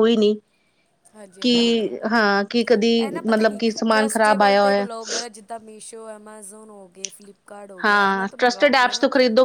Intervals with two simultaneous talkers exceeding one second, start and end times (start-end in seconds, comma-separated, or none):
none